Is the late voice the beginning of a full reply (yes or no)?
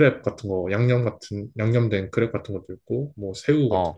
no